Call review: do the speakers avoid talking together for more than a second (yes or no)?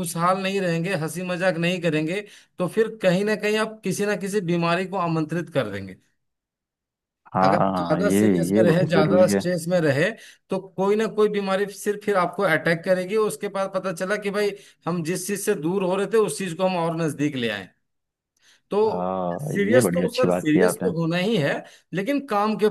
no